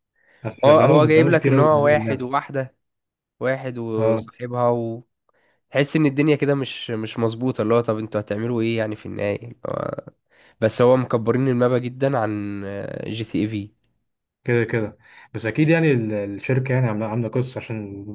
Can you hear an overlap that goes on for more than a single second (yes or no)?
yes